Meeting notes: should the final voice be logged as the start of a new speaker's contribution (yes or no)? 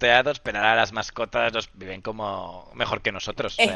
no